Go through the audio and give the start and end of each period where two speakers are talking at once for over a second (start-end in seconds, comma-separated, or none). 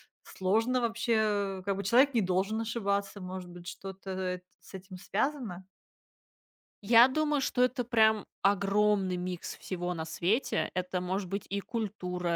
none